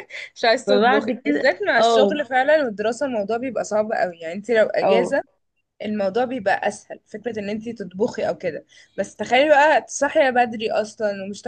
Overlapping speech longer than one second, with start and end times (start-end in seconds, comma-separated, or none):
0.7-2.2